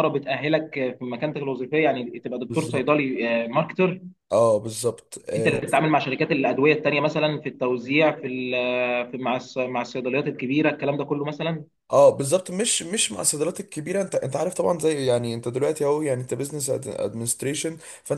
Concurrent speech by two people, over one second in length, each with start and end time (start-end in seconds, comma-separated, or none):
none